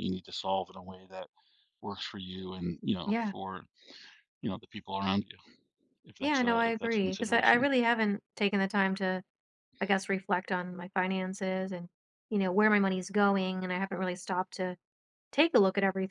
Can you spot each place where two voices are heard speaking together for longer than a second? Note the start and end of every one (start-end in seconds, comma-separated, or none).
6.2-7.7